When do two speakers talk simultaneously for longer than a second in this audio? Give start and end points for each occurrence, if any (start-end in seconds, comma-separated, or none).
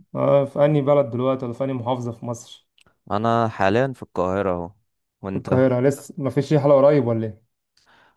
none